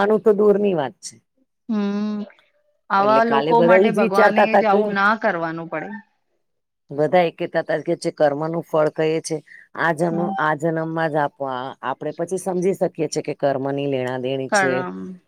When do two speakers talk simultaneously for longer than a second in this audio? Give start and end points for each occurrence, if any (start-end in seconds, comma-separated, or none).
3.0-4.8